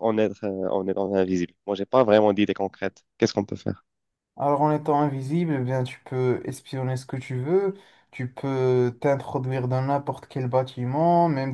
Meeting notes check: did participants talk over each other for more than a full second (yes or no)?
no